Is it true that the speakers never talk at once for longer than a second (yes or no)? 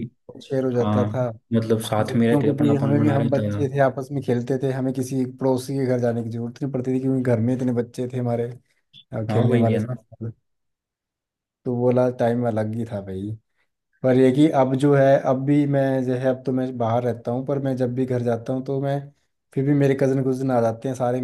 no